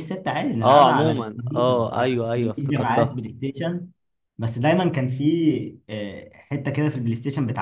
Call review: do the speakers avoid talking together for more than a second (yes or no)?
no